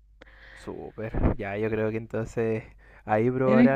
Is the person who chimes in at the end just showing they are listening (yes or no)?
yes